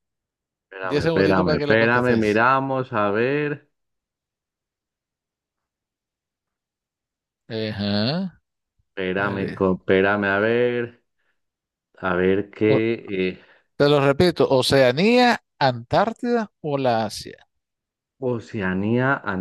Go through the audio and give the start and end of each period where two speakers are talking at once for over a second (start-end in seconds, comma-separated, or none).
0.8-2.4